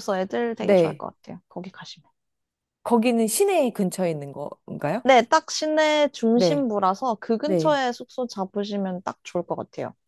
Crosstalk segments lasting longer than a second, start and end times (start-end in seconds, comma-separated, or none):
none